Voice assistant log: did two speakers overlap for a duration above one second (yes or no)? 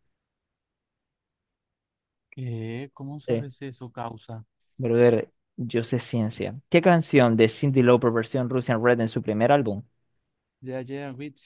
no